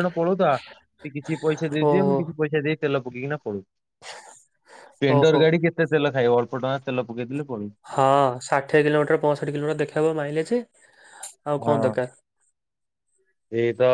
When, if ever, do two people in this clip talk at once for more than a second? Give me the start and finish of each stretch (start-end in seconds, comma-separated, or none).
none